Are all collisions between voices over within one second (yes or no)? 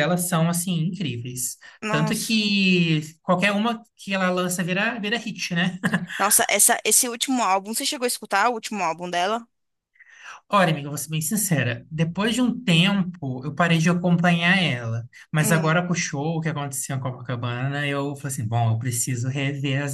yes